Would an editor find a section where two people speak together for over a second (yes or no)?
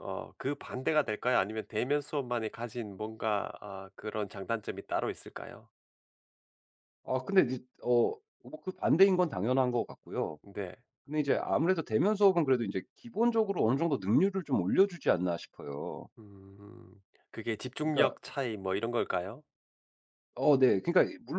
no